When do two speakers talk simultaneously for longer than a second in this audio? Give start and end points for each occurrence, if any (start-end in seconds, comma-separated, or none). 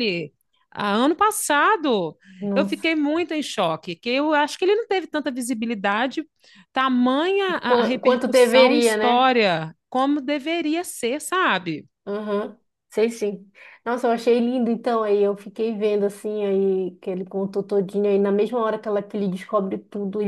7.7-9.3